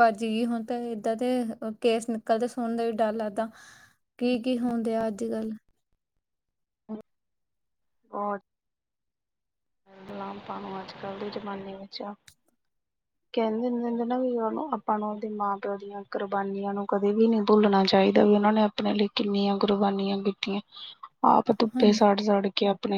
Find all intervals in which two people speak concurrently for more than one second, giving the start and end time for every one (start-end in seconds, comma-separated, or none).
none